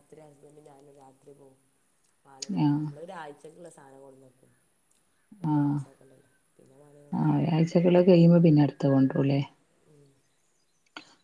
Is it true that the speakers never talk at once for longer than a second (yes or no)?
yes